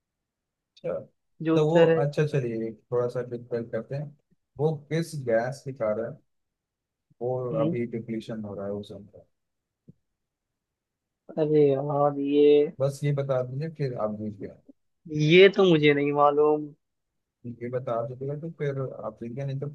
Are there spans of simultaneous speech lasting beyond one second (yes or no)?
no